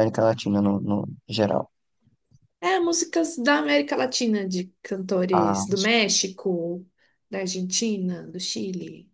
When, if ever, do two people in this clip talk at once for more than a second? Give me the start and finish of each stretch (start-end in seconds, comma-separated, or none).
none